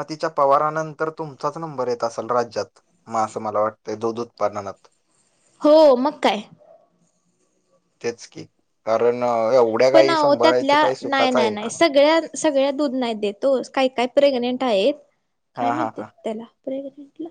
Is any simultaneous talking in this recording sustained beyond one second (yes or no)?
yes